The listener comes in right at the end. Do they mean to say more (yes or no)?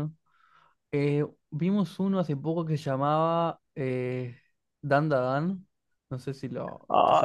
yes